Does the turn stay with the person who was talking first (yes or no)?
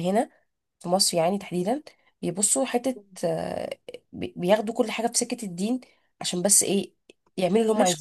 no